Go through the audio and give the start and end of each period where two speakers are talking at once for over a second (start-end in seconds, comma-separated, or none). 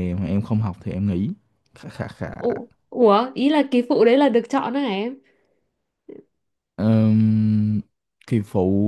none